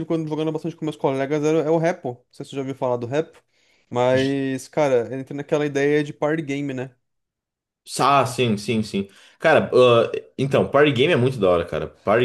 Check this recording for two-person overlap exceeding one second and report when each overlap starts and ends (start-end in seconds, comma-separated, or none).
none